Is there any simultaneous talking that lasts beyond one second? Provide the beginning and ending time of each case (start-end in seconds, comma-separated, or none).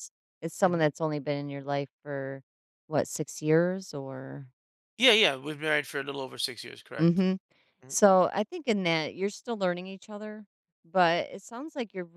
none